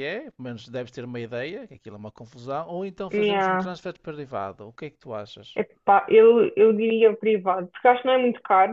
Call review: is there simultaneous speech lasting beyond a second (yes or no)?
no